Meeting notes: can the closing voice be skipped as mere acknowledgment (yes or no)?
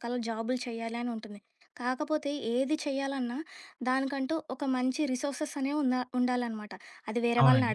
yes